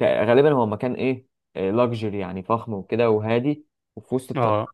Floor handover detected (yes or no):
no